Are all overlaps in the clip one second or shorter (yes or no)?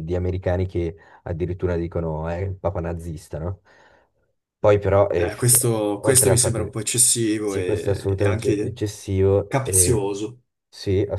no